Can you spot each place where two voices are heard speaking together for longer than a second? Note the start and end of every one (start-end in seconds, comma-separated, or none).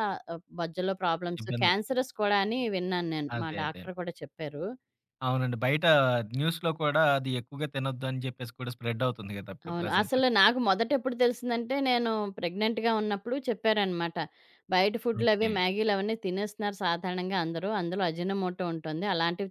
none